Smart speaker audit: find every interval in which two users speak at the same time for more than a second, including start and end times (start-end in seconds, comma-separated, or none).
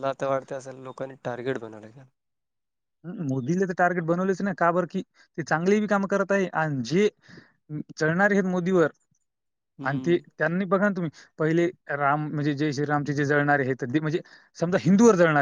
none